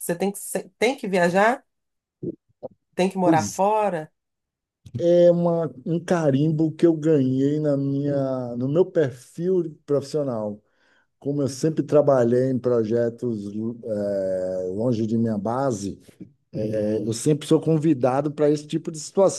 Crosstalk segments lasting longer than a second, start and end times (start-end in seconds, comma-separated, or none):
none